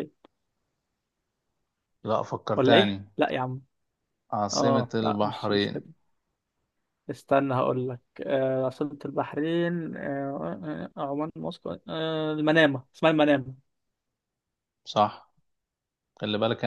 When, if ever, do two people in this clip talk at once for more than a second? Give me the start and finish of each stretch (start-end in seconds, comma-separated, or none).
4.5-5.9